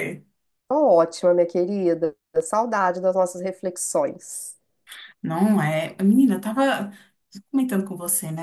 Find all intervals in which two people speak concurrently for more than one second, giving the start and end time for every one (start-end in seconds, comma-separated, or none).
none